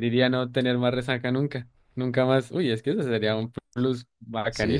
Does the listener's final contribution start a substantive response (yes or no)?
yes